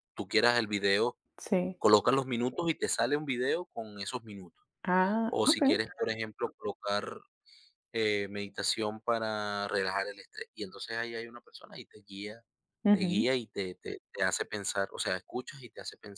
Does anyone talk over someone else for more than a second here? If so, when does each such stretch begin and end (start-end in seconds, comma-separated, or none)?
none